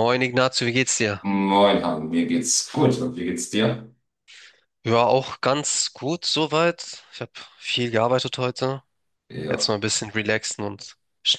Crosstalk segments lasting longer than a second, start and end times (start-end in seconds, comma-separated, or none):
none